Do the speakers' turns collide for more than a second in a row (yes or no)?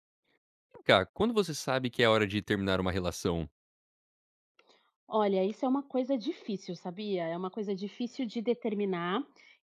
no